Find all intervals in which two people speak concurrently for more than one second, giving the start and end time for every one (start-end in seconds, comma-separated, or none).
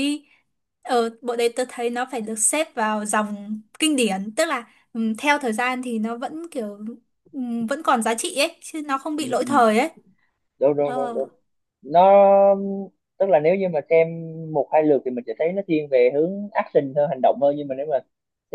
none